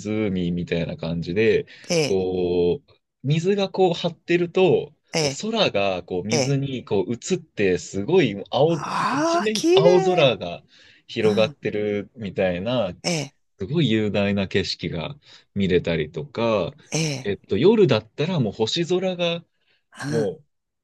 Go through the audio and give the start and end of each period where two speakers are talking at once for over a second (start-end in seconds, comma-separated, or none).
8.7-10.3